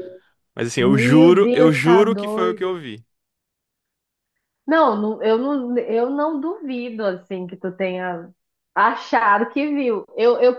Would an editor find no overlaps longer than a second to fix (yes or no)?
no